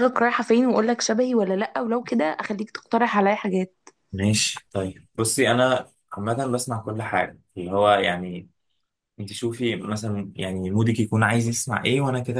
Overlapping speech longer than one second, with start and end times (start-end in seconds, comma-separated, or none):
none